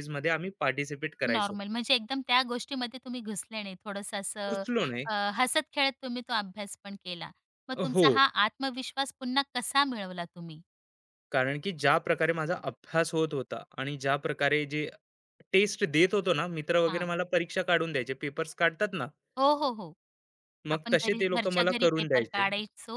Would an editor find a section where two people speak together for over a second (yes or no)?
yes